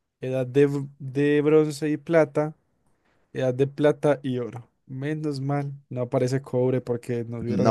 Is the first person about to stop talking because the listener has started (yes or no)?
yes